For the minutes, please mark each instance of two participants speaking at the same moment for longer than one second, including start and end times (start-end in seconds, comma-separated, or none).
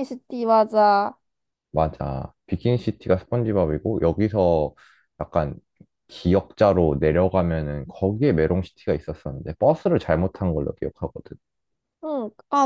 none